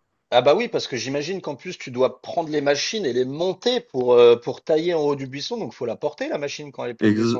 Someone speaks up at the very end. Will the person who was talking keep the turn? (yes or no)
no